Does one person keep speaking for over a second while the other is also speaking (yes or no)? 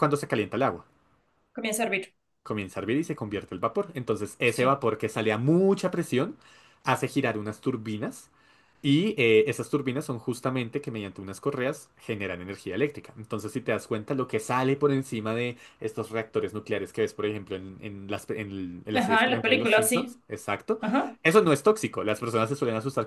yes